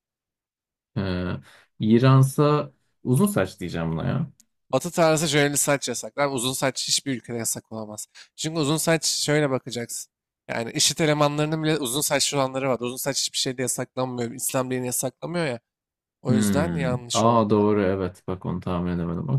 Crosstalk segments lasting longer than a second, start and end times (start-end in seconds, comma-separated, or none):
16.3-17.7